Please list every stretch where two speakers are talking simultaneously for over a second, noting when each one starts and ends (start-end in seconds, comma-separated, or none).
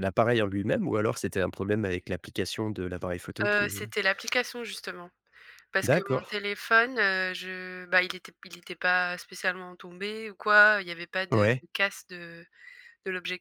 none